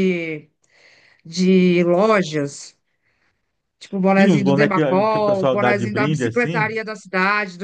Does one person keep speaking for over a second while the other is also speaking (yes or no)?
yes